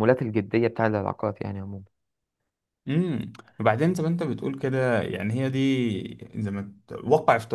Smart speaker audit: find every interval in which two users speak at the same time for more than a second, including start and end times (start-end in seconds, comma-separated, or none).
none